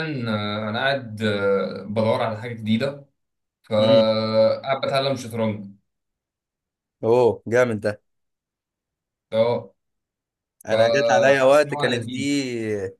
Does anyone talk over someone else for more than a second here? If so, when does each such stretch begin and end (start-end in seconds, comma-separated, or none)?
10.7-12.2